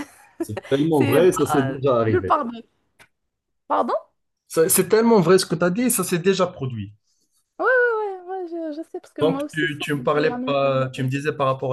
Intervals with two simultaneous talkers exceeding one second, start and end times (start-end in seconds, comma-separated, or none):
0.9-2.4, 9.2-11.1